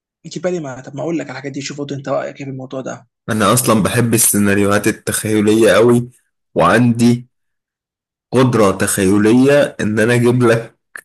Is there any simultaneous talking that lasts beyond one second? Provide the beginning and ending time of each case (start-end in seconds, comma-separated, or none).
none